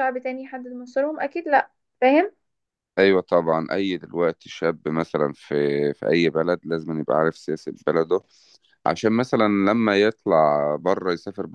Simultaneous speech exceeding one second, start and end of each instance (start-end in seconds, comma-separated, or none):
none